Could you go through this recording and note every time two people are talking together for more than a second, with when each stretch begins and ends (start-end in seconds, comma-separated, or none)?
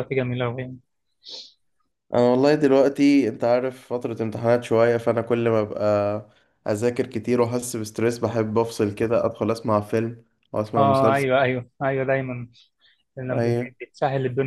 none